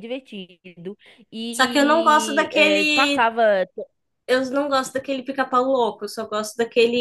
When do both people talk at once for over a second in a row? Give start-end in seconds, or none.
1.5-3.3